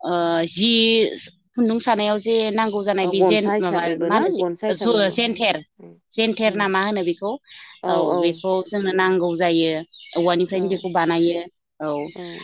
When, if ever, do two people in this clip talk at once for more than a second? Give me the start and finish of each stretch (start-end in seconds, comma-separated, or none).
3.0-5.1